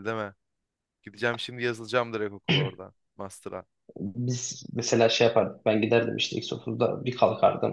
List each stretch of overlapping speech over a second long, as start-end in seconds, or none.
none